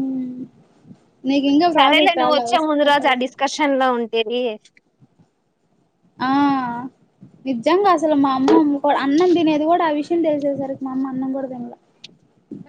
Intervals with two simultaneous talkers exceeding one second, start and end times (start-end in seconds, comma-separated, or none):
1.7-3.3